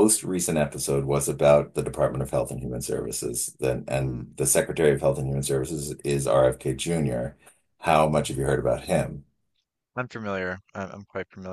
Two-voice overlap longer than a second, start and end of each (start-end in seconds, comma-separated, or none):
none